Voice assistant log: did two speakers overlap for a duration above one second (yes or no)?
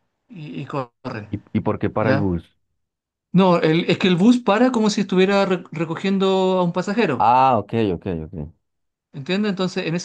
no